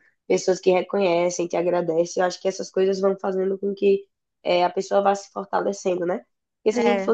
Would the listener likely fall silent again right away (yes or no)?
yes